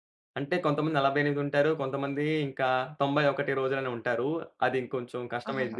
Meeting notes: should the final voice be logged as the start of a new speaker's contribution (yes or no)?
no